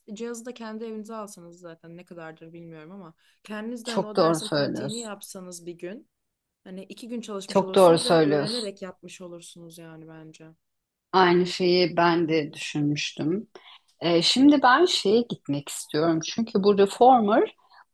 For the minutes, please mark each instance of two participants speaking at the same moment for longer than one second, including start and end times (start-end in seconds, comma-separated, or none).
3.8-5.1, 7.5-8.7